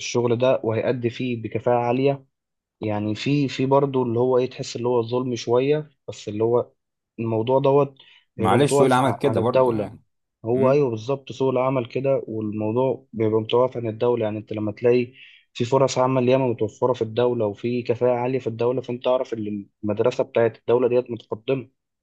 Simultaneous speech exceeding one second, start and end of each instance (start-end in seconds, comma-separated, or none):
8.4-9.9